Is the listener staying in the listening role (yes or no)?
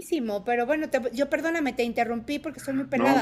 no